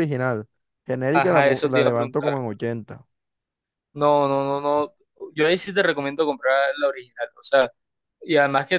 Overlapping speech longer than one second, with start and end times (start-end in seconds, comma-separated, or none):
1.1-2.4